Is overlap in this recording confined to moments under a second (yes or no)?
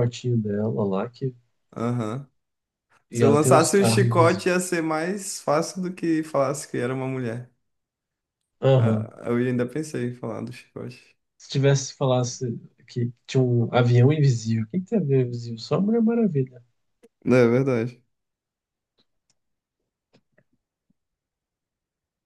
no